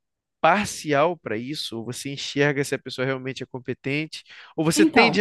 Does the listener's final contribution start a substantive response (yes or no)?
no